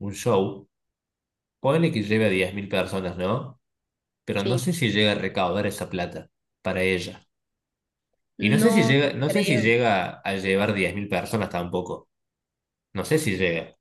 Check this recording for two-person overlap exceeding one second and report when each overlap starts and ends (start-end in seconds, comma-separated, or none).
8.4-9.7